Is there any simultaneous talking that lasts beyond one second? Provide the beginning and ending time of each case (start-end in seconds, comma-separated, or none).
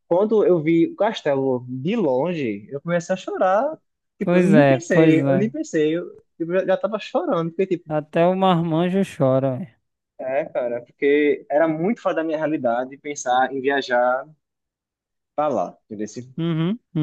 4.2-5.5